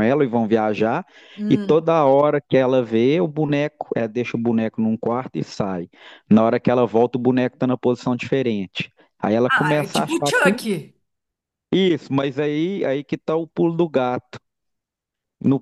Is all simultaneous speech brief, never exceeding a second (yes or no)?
no